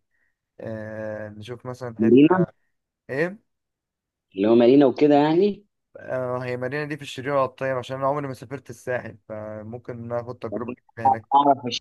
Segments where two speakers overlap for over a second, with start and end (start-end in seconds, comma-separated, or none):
none